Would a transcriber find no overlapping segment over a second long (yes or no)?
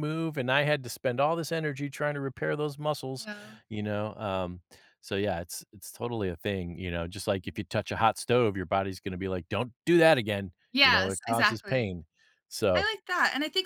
no